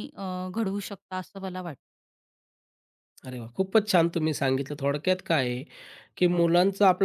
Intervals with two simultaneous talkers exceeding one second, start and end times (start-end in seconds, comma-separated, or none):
none